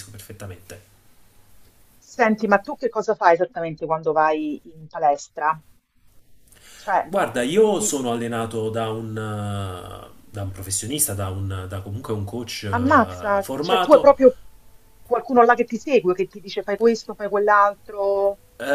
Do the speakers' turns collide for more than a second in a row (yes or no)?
yes